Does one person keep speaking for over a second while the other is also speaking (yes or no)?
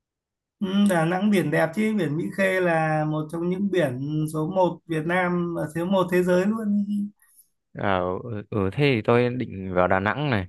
no